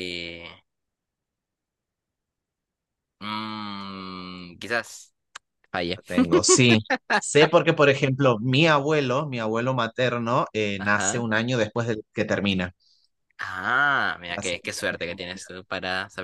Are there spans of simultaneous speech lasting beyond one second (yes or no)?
yes